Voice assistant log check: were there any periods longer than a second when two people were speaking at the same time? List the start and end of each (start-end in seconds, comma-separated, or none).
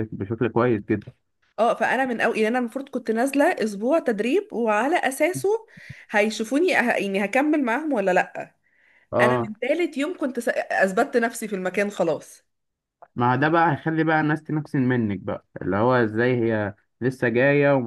none